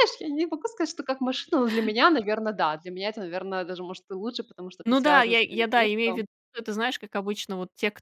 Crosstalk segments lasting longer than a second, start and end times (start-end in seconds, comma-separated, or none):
4.8-6.2